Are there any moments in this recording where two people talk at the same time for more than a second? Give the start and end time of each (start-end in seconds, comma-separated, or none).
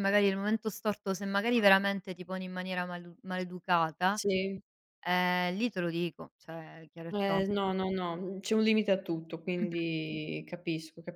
none